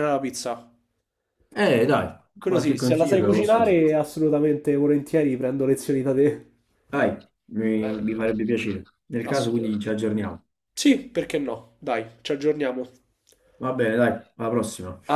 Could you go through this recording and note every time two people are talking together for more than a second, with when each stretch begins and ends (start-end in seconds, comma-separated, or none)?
2.4-3.8